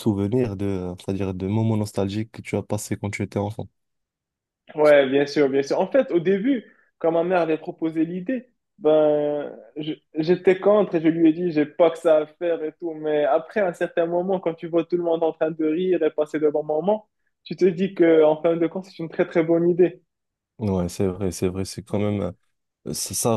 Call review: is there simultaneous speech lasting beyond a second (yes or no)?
no